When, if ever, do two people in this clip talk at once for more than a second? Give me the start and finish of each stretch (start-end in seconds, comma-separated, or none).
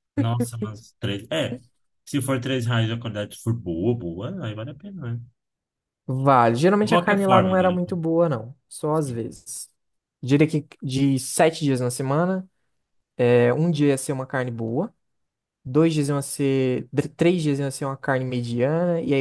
6.8-8.0